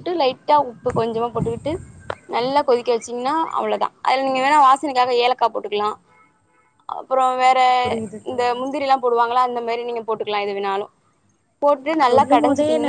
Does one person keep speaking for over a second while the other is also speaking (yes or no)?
no